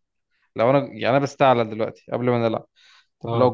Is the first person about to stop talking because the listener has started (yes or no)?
no